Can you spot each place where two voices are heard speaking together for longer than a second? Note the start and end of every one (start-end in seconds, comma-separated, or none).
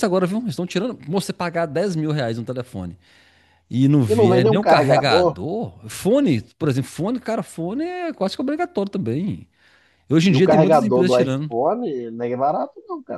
4.1-5.4, 10.3-11.6